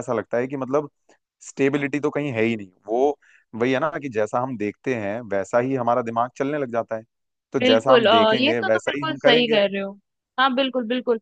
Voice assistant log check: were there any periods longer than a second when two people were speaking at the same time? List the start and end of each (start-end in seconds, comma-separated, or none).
7.6-9.6